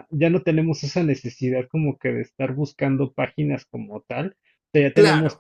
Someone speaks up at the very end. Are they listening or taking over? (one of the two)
listening